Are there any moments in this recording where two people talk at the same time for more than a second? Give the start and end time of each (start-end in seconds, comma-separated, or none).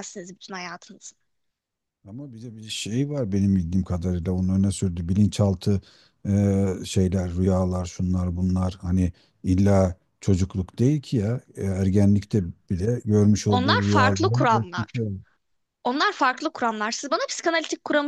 13.5-14.9